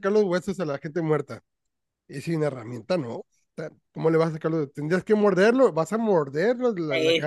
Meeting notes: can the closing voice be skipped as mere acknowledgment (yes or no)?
no